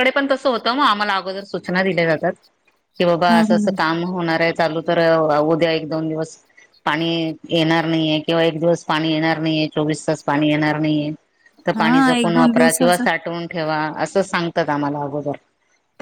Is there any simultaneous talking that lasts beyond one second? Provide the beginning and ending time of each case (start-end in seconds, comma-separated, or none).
11.7-13.0